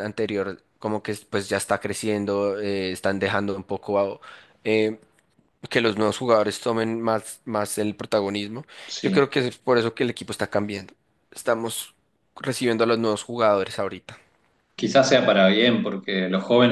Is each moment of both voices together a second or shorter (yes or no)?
yes